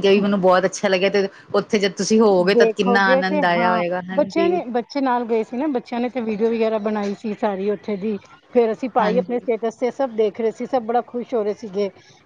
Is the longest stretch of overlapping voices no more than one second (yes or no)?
no